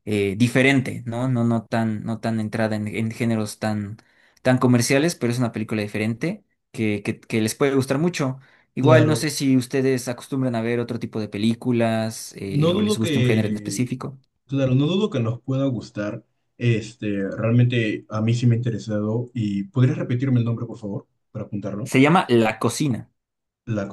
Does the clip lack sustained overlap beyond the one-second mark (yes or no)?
no